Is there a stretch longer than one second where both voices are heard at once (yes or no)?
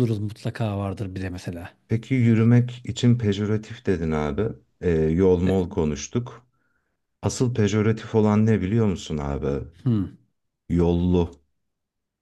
no